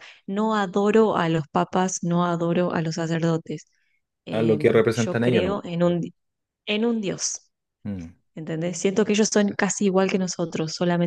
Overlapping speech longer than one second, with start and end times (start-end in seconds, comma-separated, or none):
4.3-6.0